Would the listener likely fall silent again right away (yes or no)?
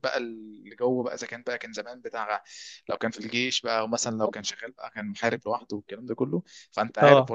yes